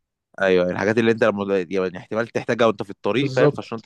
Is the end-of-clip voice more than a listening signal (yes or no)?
yes